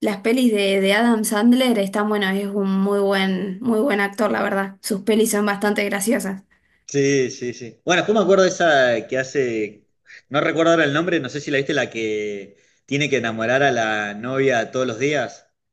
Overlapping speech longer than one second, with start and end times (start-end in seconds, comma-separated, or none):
none